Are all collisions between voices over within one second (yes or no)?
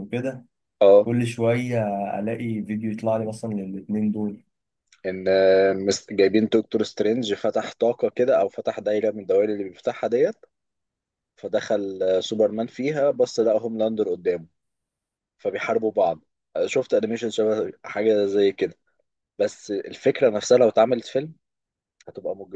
yes